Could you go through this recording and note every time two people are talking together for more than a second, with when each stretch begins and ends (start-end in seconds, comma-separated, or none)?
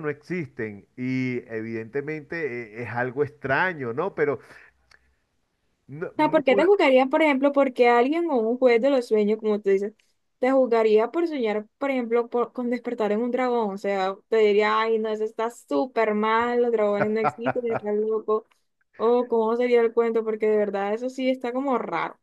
none